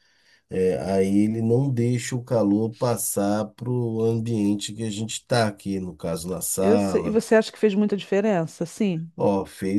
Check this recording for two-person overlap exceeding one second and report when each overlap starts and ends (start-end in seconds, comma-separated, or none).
none